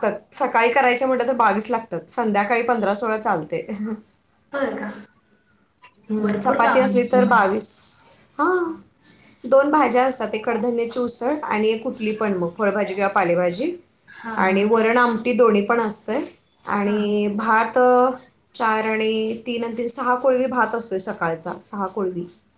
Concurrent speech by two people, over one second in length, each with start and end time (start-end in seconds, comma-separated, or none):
6.2-7.4